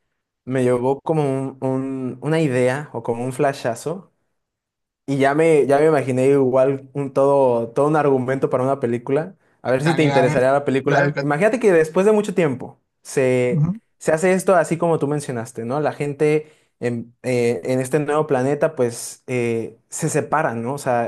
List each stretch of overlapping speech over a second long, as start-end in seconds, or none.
9.8-11.4